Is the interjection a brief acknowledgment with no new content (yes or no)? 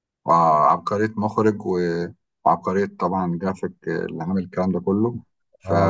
no